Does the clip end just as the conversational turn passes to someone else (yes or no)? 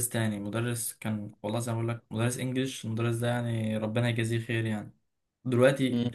no